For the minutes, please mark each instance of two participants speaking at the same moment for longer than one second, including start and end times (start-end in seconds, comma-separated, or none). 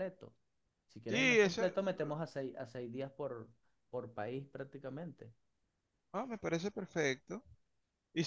none